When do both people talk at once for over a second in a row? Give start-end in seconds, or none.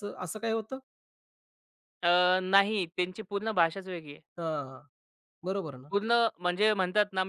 none